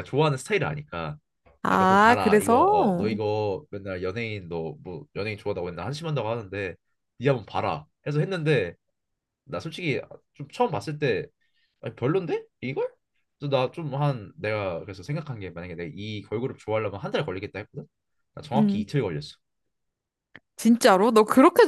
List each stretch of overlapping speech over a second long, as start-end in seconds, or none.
1.7-3.1